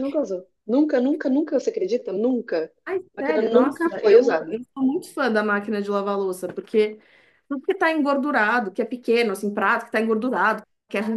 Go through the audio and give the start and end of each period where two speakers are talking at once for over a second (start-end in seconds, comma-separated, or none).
3.2-4.6